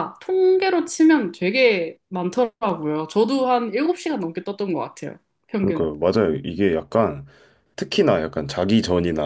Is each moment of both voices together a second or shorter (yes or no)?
yes